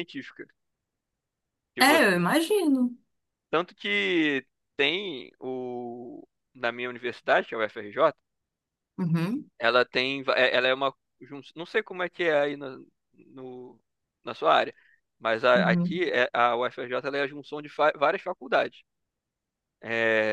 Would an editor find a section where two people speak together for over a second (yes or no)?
no